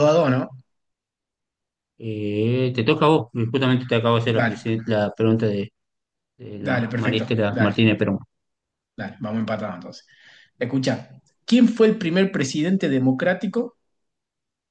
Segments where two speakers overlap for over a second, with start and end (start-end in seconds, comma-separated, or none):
6.6-7.8